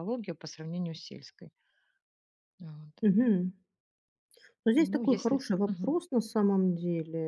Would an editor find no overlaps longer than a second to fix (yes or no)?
no